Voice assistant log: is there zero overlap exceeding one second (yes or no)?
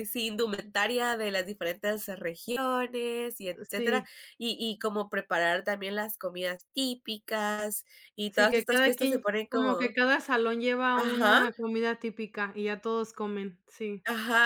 no